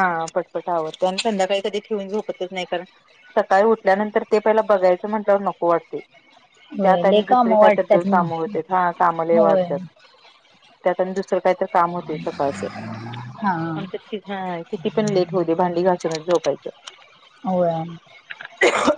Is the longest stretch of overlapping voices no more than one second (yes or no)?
no